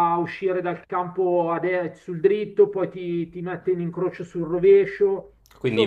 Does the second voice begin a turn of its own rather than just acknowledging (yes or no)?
yes